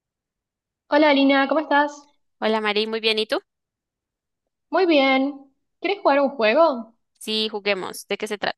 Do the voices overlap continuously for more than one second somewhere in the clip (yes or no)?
no